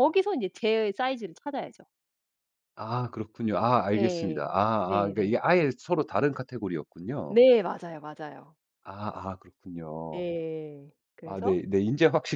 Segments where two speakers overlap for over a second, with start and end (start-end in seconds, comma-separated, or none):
3.9-5.4